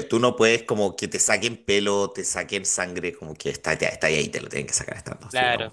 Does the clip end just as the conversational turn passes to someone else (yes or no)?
no